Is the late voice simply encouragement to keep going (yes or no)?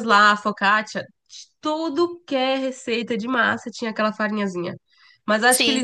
yes